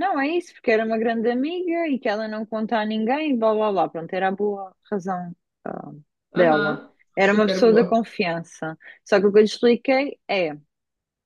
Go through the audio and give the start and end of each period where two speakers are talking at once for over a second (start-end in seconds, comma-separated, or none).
6.3-8.0